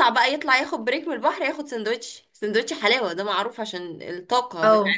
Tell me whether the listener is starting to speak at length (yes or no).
no